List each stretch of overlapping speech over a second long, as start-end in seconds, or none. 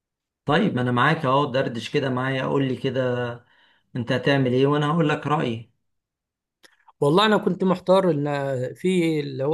none